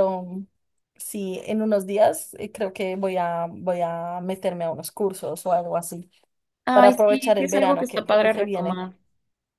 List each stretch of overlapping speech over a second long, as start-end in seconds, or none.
6.7-8.8